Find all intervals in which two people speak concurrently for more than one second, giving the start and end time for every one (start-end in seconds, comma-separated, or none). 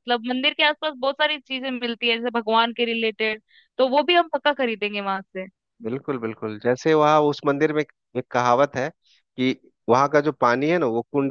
none